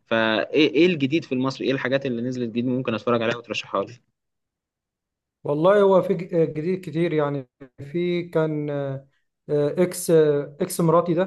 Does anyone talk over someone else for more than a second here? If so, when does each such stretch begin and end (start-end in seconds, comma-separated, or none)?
none